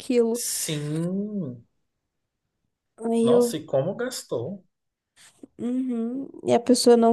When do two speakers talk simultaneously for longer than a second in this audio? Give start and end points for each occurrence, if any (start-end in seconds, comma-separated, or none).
none